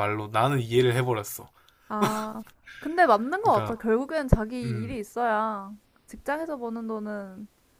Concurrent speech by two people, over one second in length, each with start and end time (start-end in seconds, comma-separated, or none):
none